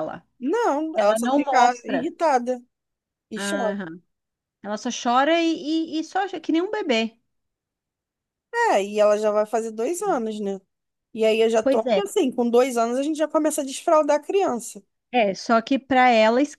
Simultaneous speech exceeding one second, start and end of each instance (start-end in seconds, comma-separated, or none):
0.9-2.1